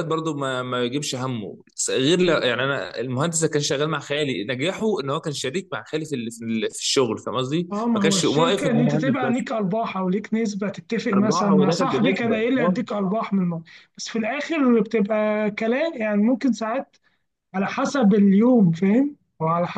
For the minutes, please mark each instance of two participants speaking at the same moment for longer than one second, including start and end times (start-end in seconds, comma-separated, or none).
7.7-9.4, 11.1-12.7